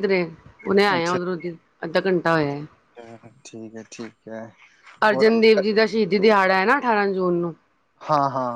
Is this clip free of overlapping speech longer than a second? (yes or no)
yes